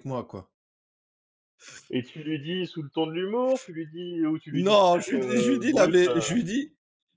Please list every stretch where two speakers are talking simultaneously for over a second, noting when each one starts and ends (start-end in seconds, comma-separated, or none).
4.5-6.2